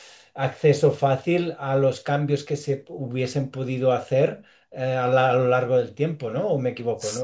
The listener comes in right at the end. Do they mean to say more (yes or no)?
yes